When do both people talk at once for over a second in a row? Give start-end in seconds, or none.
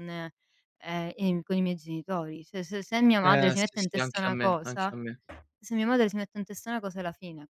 3.2-4.9